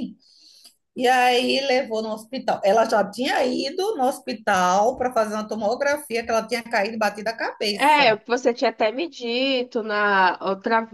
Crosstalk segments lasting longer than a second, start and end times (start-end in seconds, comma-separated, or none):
none